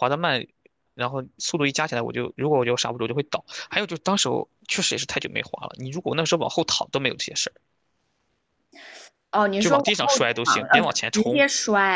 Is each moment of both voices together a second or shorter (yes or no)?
no